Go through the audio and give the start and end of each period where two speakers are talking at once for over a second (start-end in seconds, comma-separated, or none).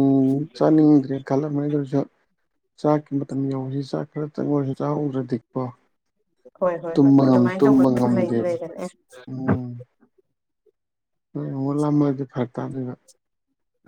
6.9-8.5